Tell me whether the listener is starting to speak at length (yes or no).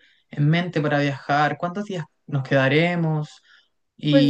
yes